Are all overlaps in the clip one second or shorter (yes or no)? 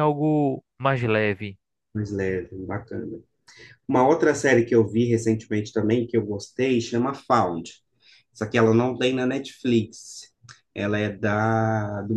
yes